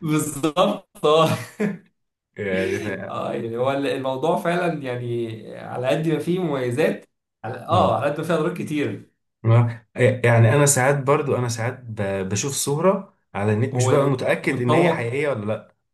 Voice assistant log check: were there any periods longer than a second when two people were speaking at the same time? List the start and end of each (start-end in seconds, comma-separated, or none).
13.7-15.1